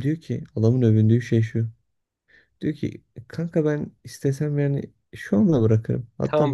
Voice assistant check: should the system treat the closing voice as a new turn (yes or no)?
yes